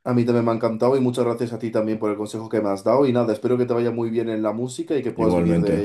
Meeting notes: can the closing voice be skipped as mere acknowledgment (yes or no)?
no